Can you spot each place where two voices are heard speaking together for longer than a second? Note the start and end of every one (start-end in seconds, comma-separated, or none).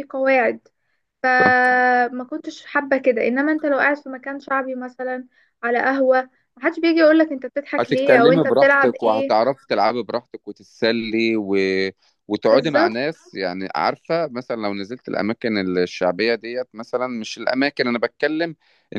7.8-9.3